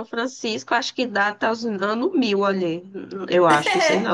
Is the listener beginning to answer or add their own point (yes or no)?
yes